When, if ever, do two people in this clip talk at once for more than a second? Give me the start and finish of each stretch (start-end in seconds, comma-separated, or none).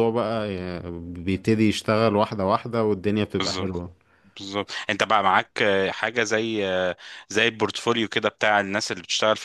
none